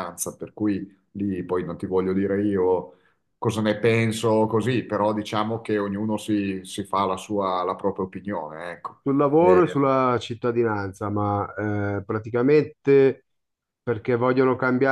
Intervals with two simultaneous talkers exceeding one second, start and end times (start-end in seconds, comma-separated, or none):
none